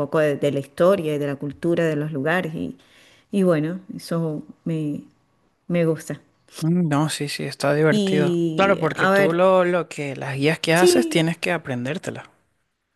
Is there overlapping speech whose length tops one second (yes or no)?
yes